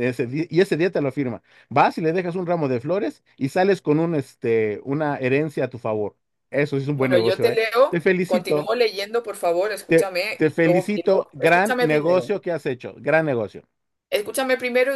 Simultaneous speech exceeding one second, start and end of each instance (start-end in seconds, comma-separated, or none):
7.0-8.7, 9.9-12.3